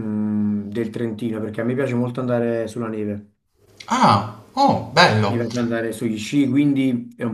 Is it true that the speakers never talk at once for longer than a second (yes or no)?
yes